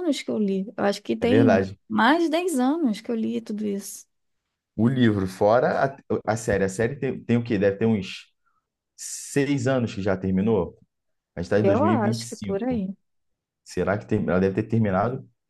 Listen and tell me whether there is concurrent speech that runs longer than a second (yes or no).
yes